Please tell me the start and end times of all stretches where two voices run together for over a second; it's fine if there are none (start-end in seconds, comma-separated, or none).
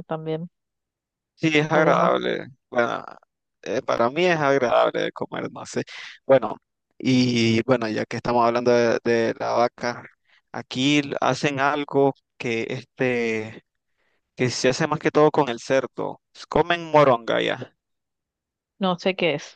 none